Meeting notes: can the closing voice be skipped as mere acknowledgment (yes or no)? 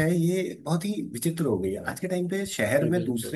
yes